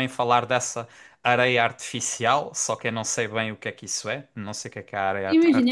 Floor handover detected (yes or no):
yes